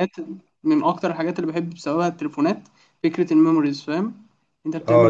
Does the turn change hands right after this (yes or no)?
yes